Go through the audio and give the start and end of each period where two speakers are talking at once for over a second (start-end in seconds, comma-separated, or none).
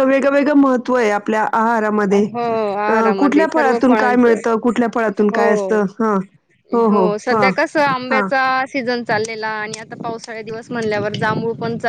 2.9-4.4